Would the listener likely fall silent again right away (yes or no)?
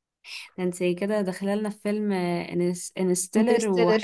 yes